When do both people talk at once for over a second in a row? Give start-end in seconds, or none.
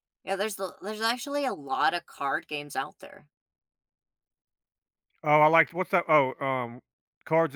none